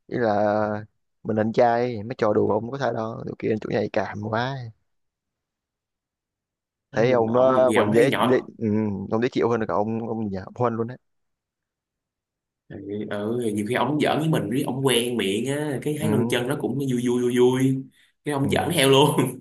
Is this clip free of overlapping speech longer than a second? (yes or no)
no